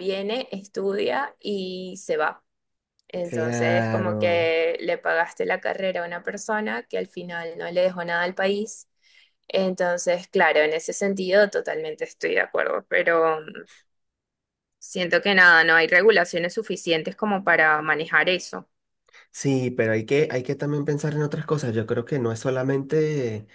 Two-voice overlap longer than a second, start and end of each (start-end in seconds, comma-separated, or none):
3.2-4.5